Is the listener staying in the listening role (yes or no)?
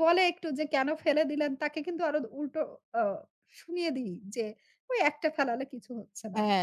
no